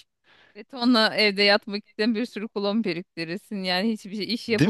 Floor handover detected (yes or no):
no